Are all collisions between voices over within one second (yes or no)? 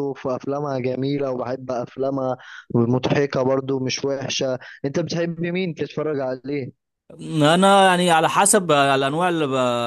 yes